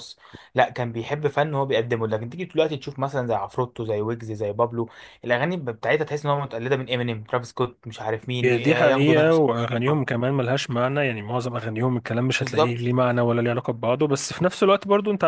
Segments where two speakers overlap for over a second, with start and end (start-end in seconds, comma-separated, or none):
8.4-10.1